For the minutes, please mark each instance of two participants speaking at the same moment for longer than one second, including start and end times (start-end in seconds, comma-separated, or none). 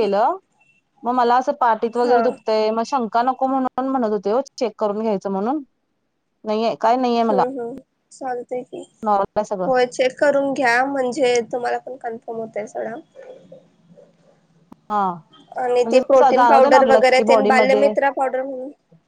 15.8-17.8